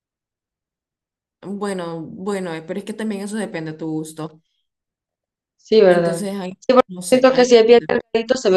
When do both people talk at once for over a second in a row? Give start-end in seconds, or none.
5.8-8.0